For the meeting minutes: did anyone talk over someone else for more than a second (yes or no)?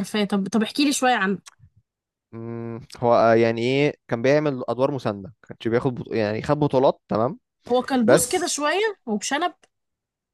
no